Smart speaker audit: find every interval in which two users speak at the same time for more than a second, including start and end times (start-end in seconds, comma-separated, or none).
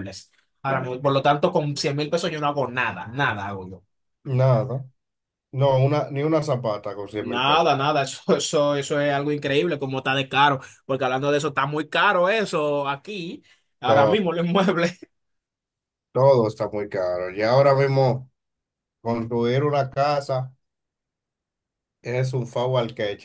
none